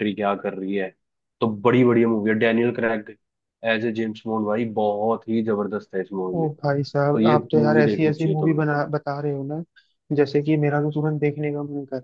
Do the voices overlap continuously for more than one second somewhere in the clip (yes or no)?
yes